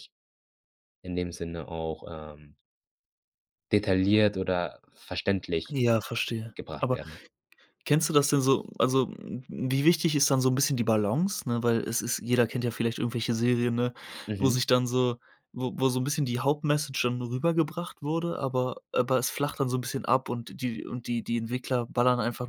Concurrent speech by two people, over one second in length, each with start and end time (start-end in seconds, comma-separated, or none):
none